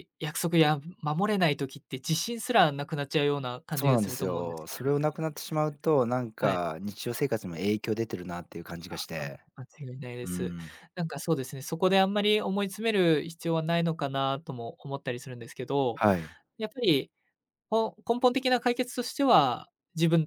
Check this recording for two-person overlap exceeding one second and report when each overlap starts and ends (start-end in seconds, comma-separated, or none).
3.7-5.1